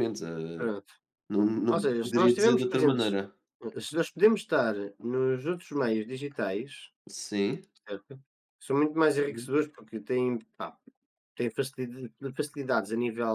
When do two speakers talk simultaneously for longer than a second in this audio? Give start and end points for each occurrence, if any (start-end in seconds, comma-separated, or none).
1.7-3.2